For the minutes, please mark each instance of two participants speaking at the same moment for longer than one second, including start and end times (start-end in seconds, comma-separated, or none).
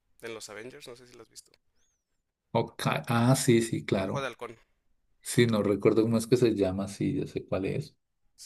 none